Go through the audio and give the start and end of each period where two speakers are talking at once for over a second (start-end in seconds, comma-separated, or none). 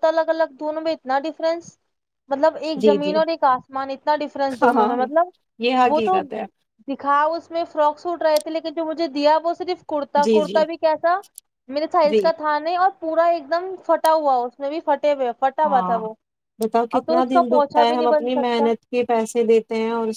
17.0-18.7